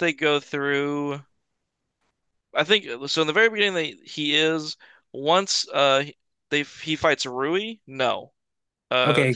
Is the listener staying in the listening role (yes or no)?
no